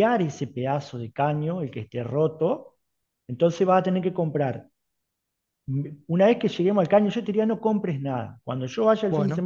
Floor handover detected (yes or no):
no